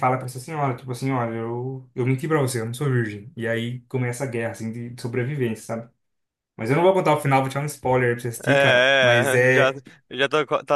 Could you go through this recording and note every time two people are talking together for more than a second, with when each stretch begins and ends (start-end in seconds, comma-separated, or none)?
8.4-9.7